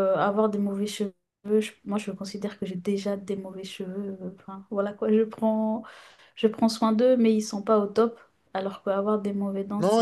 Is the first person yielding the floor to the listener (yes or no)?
yes